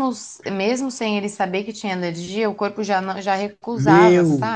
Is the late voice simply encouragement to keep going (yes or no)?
no